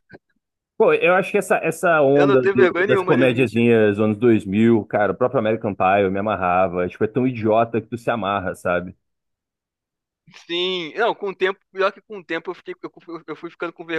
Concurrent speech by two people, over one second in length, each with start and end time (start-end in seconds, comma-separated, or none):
2.1-3.6